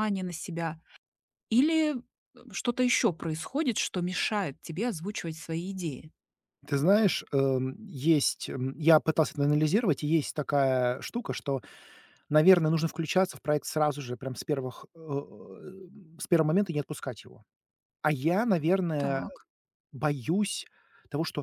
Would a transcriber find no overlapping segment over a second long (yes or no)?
yes